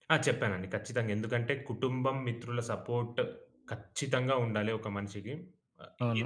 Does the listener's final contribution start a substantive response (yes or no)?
yes